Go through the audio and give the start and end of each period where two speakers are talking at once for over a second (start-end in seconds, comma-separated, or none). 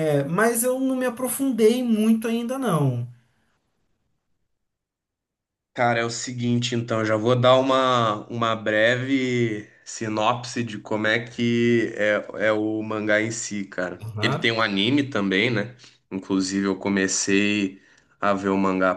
none